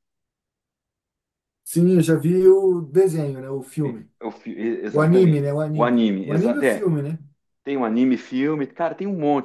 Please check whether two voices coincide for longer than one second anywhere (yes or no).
yes